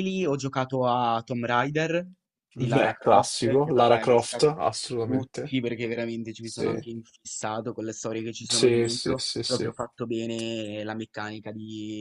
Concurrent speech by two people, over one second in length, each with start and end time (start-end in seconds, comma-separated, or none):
2.6-4.5, 8.5-9.8